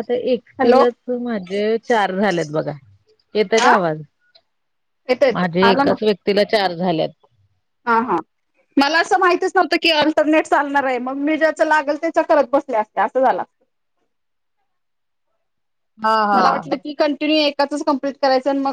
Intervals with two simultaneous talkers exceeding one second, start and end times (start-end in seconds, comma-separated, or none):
none